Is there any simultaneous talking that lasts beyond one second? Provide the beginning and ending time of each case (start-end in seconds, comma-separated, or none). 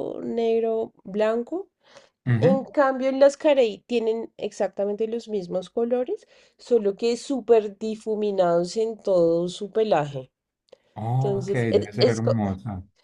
11.2-12.4